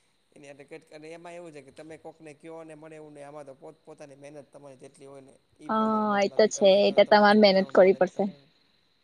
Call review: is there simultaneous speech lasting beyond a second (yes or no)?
yes